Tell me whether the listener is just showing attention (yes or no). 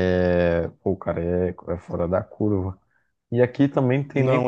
yes